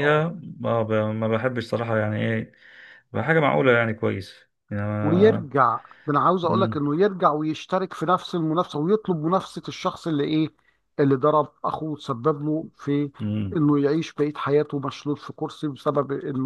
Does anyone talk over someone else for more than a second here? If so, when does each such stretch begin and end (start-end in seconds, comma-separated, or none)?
none